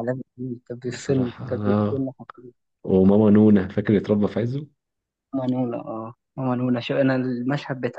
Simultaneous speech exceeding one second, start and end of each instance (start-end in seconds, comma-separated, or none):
0.8-2.1